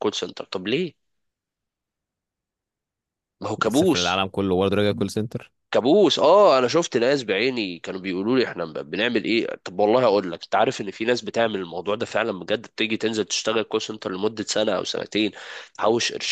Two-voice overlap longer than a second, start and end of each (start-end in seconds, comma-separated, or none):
none